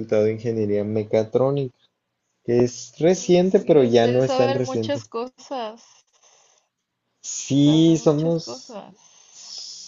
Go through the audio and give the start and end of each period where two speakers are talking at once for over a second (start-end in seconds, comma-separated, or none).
3.1-5.0, 7.6-8.8